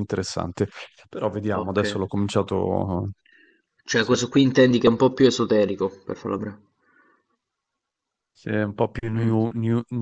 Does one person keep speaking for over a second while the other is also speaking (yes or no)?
no